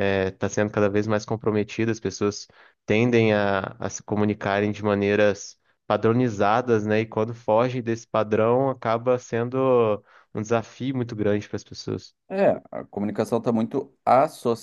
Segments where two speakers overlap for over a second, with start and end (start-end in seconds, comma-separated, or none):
none